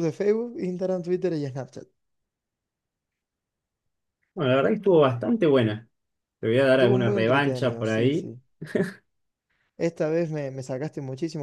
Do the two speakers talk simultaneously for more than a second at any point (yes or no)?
yes